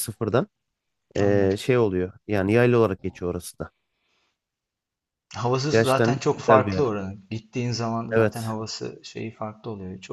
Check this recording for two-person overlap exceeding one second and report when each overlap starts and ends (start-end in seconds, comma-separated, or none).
5.7-6.9